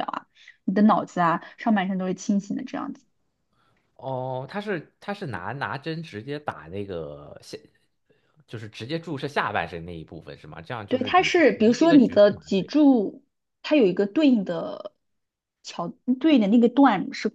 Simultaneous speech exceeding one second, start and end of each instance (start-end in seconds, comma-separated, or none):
10.9-12.7